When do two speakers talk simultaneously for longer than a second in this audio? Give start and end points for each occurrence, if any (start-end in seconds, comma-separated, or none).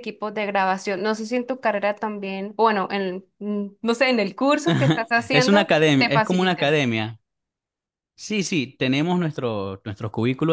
5.3-6.8